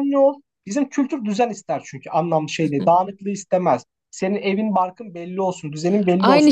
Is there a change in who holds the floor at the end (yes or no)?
yes